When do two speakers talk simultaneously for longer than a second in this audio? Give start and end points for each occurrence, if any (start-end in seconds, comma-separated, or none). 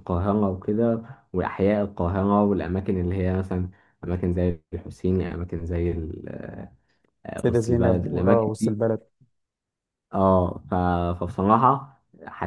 7.3-8.8